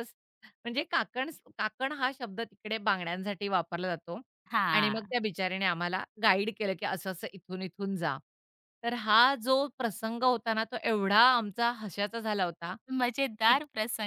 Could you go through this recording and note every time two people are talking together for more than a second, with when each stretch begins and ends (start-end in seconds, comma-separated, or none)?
none